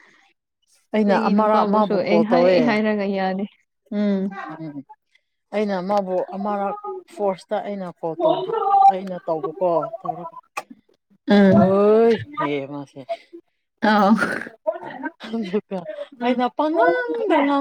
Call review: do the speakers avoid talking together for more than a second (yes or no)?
no